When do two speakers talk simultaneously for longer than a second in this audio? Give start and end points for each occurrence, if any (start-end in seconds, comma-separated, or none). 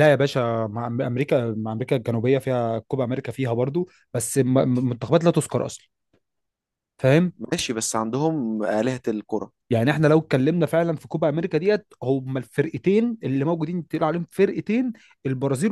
none